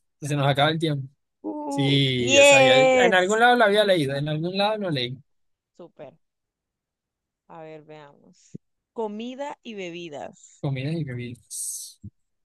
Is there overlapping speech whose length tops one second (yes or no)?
yes